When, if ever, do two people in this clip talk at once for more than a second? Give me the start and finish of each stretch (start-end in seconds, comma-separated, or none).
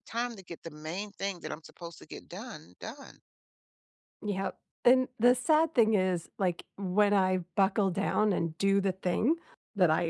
none